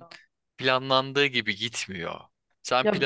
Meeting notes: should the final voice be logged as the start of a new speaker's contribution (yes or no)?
no